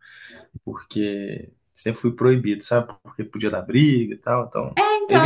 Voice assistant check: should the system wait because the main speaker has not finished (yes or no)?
no